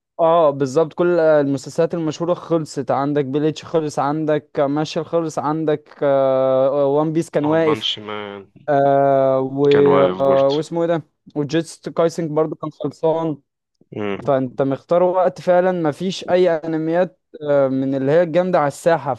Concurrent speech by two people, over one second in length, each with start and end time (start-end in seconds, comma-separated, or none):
none